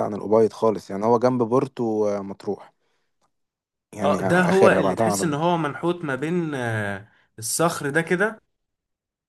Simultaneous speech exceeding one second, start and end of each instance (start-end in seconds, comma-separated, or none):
4.0-5.4